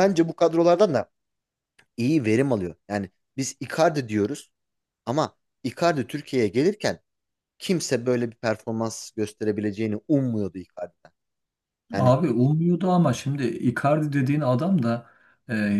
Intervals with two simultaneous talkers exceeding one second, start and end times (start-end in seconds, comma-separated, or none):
none